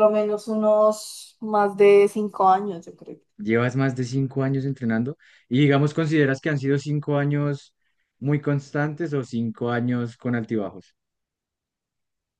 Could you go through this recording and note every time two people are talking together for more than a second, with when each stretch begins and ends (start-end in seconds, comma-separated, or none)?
none